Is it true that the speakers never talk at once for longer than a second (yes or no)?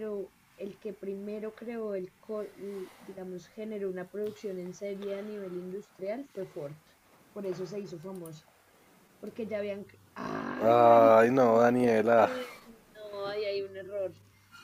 no